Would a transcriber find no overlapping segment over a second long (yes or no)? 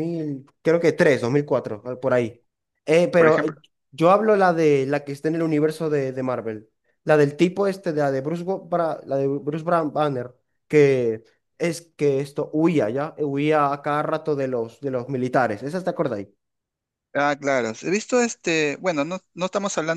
yes